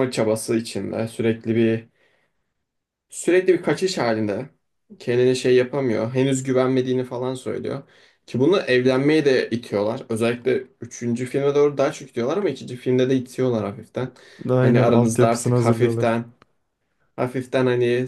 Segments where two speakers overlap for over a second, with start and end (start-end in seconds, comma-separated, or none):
14.6-16.2